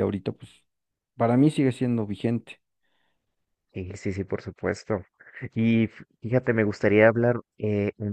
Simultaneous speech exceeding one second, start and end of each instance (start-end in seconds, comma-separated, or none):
none